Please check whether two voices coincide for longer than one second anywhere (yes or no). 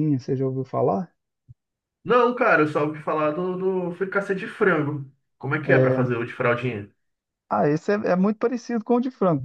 no